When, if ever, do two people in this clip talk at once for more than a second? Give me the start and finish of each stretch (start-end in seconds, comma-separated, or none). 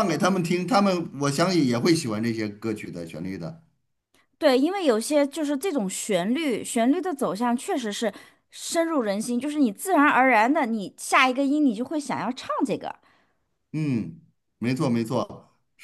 none